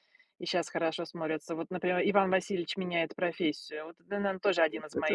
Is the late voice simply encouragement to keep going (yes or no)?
no